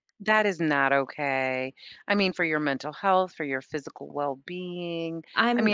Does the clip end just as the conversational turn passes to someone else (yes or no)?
no